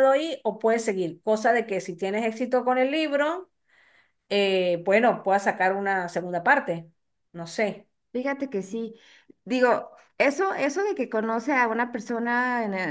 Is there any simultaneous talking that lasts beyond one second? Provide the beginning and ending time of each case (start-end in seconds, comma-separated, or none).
none